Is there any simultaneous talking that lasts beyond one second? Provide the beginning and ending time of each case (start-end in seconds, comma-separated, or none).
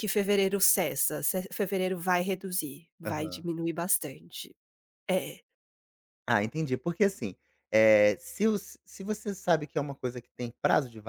none